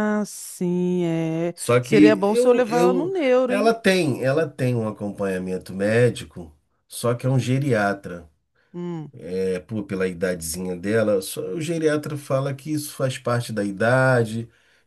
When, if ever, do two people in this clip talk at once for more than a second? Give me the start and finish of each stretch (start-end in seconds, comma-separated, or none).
1.5-3.7